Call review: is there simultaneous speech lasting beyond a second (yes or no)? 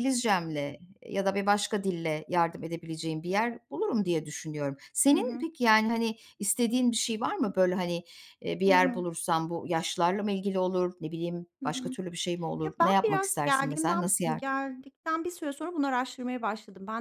yes